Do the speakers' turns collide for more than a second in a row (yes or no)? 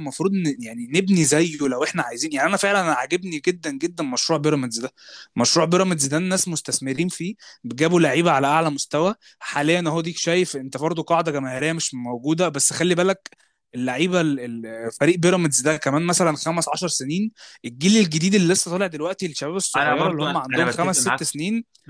yes